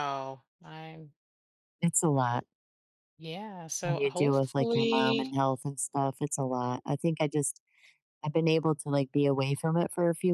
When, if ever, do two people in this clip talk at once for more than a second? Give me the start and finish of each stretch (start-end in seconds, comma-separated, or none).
3.8-5.3